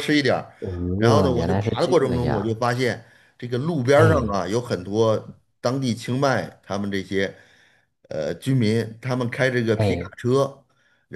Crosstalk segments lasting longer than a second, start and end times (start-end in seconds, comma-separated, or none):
1.0-2.6